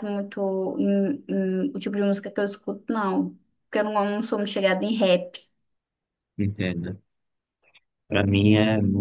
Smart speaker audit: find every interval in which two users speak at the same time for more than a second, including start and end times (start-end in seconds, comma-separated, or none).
none